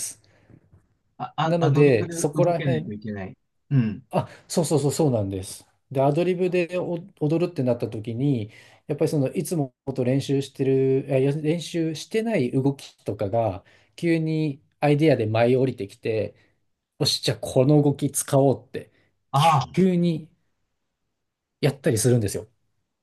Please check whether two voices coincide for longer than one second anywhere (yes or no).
yes